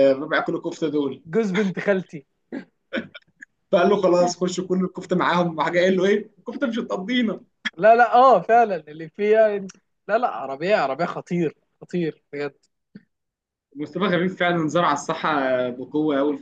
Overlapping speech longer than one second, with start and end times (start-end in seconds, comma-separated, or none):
none